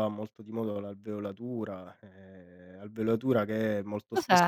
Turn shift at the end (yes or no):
no